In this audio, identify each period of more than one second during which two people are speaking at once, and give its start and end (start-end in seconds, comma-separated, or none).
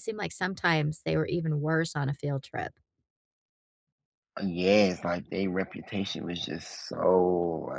none